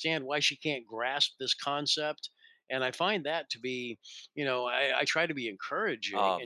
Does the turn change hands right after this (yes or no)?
yes